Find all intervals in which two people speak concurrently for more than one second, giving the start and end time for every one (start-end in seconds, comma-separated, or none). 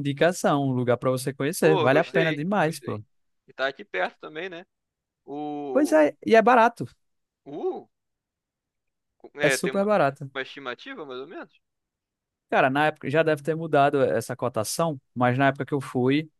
1.6-3.0